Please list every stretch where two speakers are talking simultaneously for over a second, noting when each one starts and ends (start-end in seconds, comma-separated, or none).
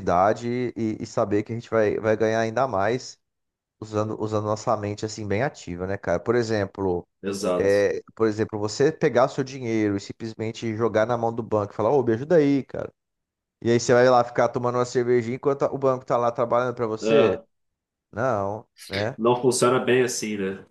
none